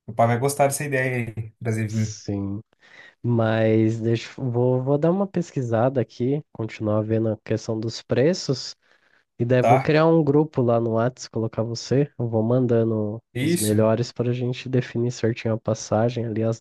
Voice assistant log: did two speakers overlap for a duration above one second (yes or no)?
no